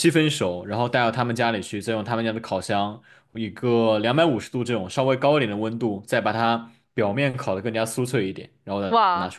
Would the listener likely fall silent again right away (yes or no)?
no